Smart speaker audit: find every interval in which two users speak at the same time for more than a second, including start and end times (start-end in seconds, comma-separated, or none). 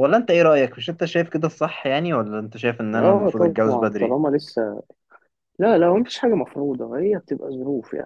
2.9-4.2